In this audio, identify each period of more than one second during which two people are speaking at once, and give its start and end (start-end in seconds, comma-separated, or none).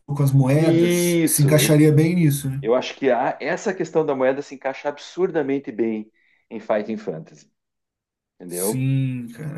0.5-1.8